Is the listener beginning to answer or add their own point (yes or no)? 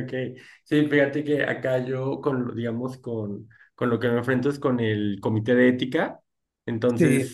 no